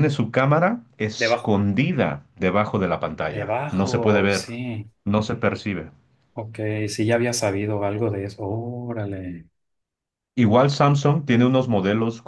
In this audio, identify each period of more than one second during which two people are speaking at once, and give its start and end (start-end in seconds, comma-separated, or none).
3.3-4.5